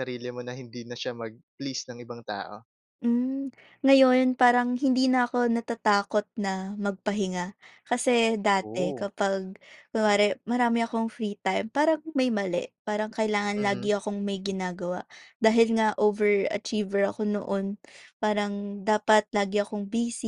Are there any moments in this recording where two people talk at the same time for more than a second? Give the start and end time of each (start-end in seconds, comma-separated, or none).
none